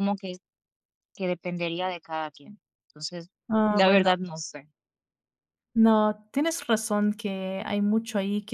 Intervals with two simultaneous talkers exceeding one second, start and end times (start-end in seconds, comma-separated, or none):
none